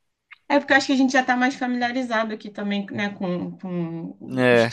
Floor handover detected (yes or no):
no